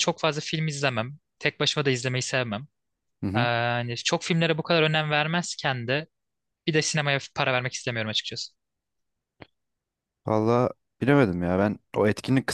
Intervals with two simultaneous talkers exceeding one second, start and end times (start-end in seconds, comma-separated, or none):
none